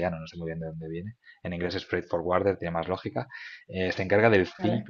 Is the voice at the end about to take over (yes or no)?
no